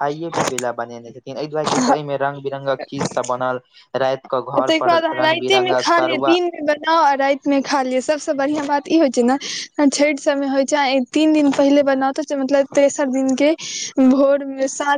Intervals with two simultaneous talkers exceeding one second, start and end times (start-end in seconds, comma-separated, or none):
4.6-6.4